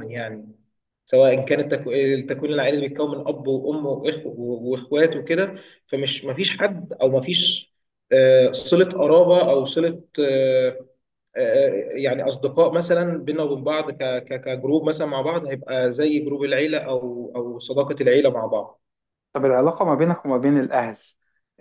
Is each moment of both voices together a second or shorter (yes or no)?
yes